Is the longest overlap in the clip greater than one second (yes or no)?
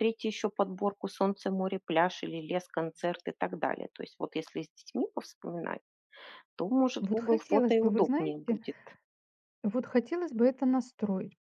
yes